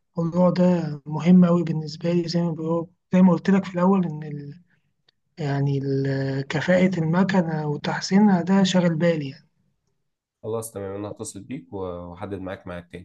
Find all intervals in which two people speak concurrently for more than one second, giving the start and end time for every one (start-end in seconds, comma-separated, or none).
none